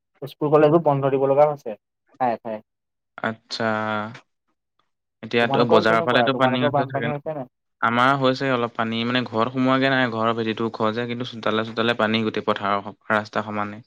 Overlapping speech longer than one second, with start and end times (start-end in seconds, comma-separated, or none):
5.4-7.3